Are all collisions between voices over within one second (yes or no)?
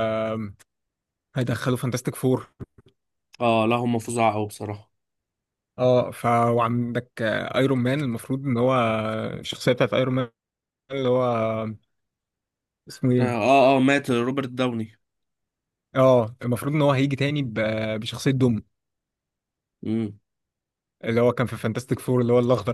yes